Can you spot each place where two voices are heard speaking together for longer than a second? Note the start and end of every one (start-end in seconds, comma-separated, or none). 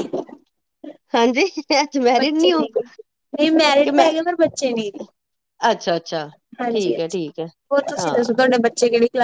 none